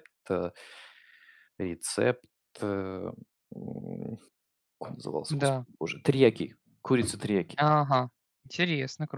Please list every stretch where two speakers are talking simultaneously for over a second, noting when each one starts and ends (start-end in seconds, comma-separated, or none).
none